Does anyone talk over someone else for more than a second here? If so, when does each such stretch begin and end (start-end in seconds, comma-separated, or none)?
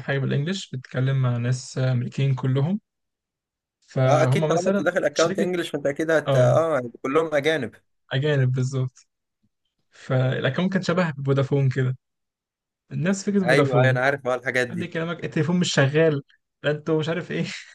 4.1-5.5